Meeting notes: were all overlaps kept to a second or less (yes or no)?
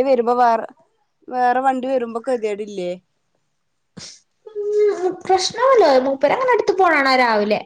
yes